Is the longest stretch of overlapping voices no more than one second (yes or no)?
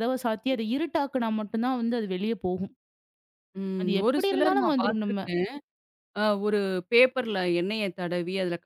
no